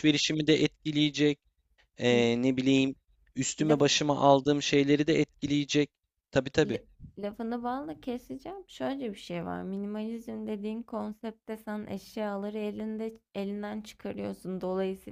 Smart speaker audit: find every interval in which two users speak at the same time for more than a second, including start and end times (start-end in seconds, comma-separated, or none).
none